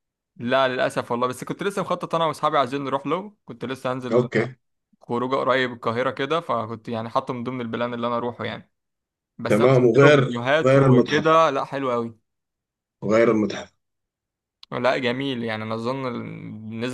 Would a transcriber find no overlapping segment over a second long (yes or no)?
no